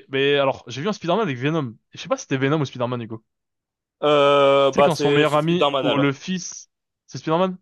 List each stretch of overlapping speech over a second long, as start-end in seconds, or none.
4.7-6.1